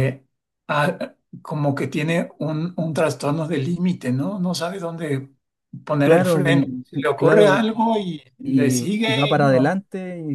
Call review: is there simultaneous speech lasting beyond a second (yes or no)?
yes